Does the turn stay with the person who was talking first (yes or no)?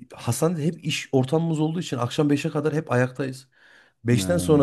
yes